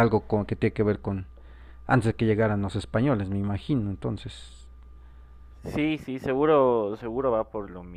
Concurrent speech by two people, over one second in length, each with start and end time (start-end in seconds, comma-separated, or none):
none